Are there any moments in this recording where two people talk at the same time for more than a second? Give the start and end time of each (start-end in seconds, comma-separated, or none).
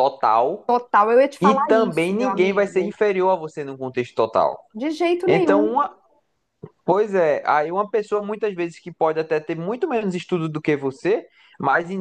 1.4-3.0